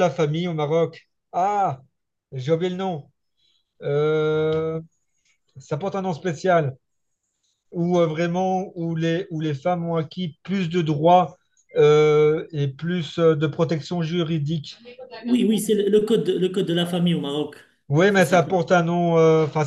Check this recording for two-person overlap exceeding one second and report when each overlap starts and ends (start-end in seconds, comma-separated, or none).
none